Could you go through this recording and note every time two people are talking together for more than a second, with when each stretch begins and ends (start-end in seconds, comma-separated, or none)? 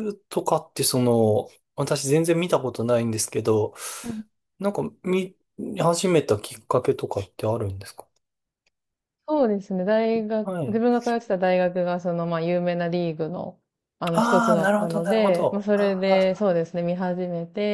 14.1-16.5